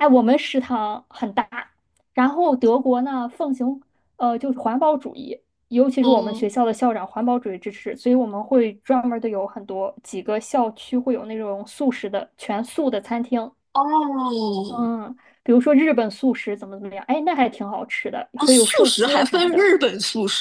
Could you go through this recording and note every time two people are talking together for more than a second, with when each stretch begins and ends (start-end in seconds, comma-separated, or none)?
18.4-19.7